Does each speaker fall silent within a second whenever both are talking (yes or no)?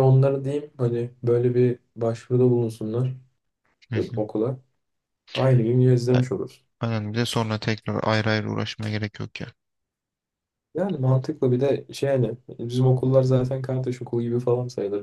yes